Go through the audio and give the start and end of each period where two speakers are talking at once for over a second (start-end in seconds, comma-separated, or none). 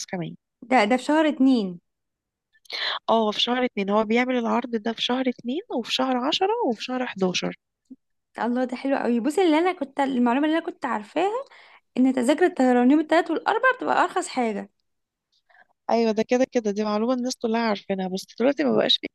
none